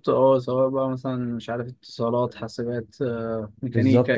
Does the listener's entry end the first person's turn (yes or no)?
yes